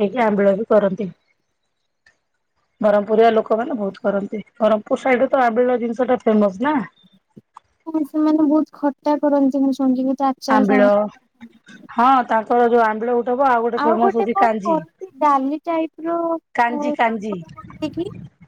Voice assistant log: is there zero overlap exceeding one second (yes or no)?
yes